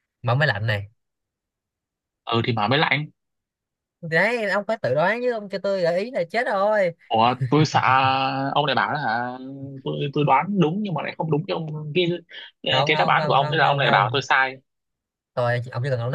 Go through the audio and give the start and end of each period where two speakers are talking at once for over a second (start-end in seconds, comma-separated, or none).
12.8-14.2